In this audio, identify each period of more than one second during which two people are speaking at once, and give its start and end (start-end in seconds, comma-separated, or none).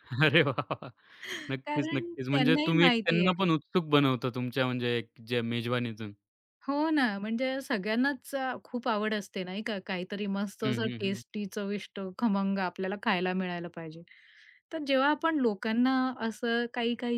1.6-3.5